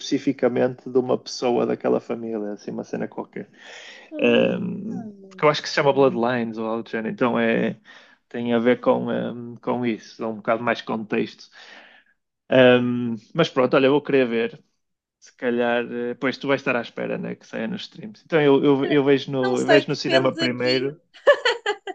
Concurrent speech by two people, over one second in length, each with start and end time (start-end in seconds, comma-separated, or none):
19.4-20.9